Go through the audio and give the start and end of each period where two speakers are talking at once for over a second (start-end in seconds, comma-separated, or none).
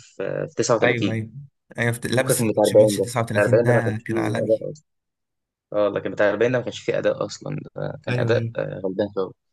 2.2-4.7